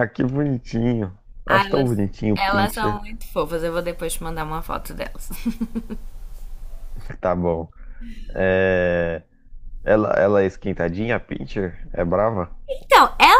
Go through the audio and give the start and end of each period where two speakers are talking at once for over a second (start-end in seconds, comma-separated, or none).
1.4-3.0